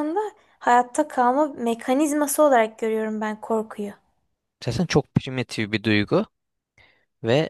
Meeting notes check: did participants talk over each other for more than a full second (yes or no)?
no